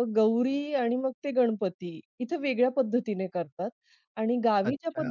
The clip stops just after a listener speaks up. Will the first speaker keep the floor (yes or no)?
no